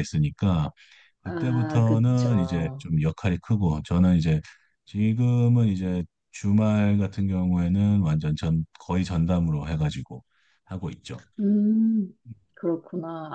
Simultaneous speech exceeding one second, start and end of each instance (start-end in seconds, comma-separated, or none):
1.2-2.9